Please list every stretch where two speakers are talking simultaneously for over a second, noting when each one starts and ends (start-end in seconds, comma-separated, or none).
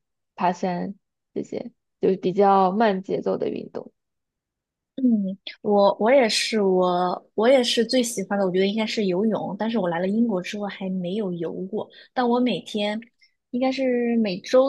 none